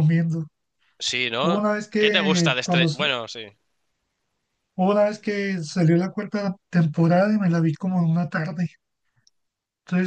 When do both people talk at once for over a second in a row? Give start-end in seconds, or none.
1.4-3.0